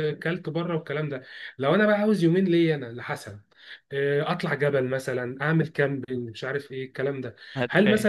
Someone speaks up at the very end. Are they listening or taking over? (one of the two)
listening